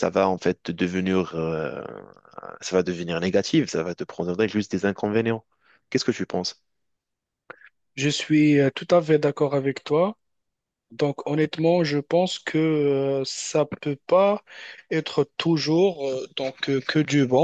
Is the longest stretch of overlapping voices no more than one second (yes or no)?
yes